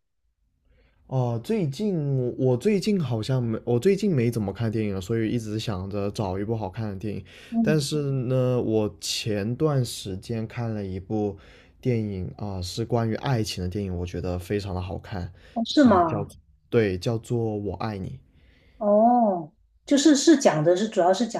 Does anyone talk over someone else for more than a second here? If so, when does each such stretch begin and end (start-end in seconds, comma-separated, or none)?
none